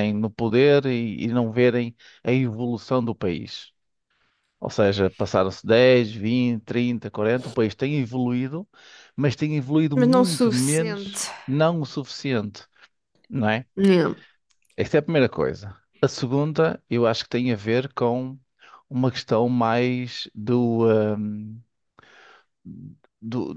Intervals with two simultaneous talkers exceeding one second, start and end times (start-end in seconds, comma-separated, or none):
9.9-11.3